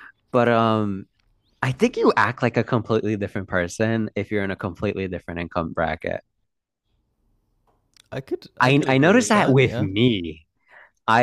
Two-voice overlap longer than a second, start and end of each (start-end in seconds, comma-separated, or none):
8.6-9.9